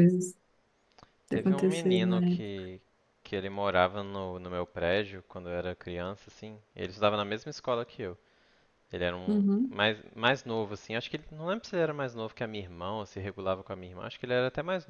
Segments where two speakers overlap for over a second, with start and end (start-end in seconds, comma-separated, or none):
1.3-2.7